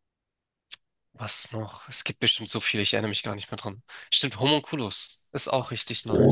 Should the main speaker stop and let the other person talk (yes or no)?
yes